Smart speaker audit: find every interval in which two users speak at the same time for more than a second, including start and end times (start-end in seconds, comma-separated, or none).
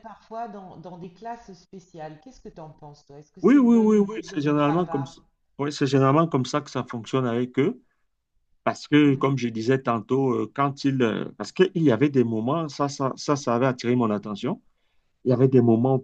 3.4-5.2